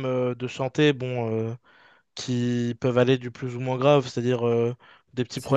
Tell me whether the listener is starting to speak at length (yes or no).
no